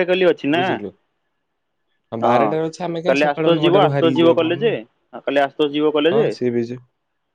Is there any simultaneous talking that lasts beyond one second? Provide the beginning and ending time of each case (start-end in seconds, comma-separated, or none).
3.1-4.7